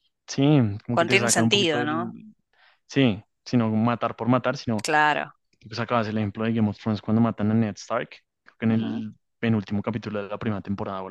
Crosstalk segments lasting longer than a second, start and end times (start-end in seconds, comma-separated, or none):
0.9-2.2